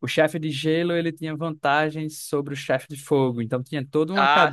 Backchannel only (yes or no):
yes